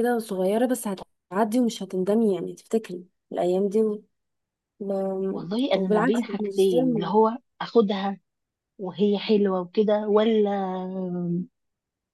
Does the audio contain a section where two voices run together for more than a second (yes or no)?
yes